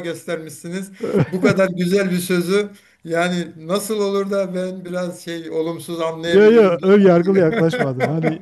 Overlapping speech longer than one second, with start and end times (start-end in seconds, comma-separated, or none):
6.2-7.5